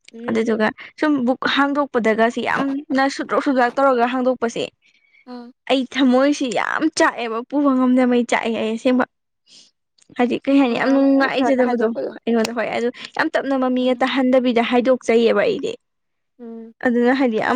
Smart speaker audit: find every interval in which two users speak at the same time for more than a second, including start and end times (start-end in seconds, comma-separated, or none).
10.6-12.1